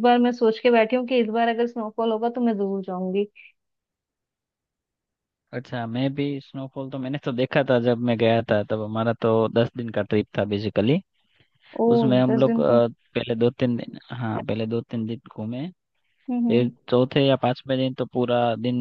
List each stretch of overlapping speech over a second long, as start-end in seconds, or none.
none